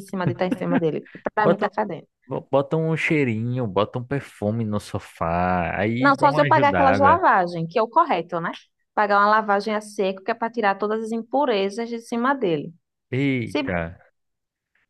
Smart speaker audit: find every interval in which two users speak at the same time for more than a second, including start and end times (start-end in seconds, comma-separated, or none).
6.0-7.2